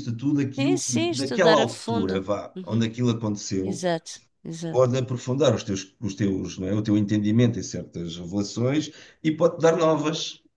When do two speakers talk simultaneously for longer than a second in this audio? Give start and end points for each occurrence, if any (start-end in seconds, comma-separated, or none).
0.6-2.8